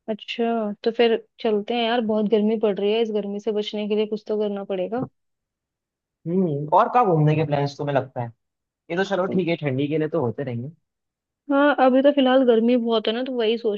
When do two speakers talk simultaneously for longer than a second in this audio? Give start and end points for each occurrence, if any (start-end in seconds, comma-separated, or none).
none